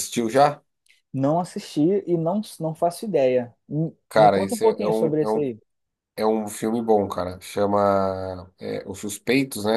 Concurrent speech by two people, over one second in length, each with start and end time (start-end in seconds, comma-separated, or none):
4.1-5.5